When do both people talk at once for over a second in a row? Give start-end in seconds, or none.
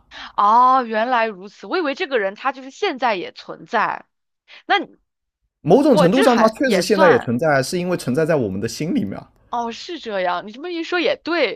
5.9-7.3